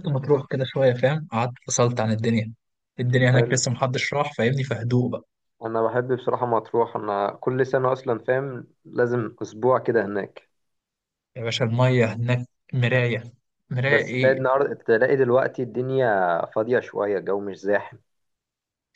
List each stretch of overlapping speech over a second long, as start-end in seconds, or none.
none